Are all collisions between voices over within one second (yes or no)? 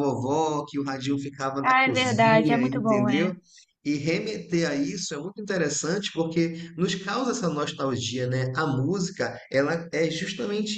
no